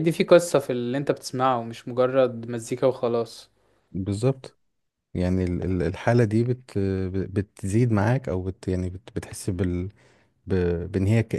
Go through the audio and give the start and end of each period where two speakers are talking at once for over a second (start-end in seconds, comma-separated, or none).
none